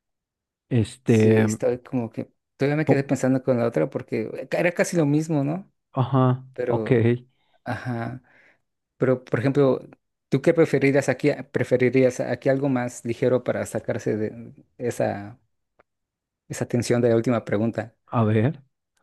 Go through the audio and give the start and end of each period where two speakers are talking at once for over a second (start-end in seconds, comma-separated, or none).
none